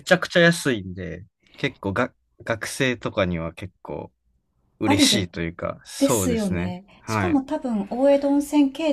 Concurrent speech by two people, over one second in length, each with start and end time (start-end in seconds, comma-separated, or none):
6.0-7.4